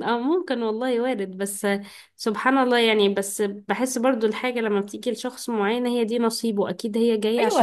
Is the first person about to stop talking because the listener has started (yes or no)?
yes